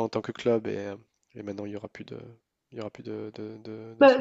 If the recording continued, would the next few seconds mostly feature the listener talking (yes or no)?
yes